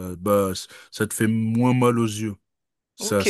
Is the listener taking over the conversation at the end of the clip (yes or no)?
yes